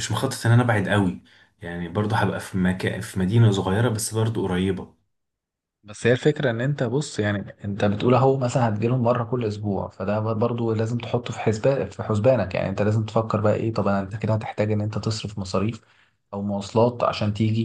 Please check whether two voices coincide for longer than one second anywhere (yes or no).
no